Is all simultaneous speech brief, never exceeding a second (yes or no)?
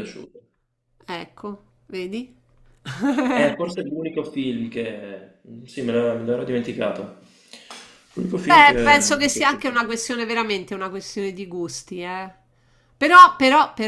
no